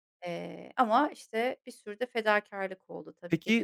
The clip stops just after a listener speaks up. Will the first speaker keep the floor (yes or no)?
no